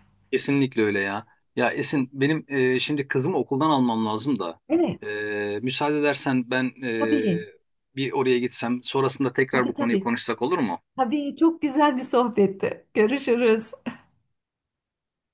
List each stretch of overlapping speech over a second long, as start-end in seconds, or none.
none